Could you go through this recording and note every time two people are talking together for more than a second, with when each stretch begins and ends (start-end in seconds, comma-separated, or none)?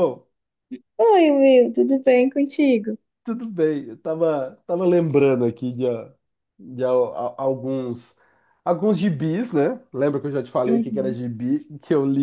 none